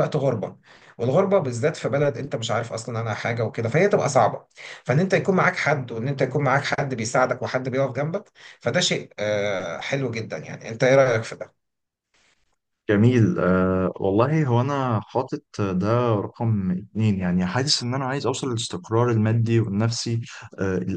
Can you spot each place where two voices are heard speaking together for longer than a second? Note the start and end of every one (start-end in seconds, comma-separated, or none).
none